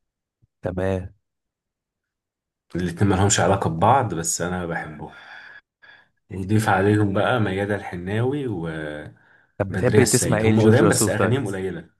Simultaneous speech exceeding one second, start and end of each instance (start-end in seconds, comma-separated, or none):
10.0-11.4